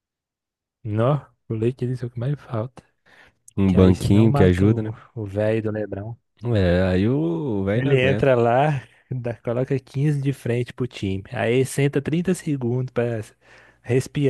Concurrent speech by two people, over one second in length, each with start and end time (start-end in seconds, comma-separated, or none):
3.6-4.9